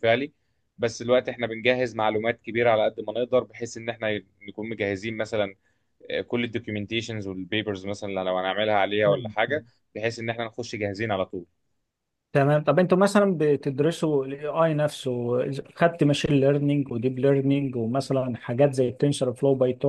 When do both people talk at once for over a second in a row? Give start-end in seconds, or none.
none